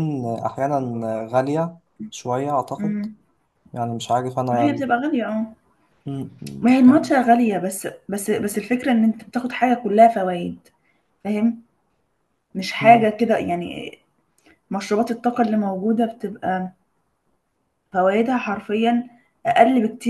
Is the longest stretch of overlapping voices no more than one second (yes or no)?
yes